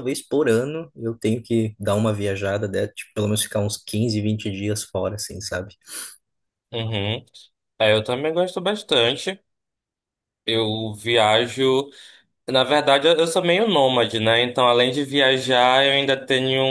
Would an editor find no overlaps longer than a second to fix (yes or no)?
yes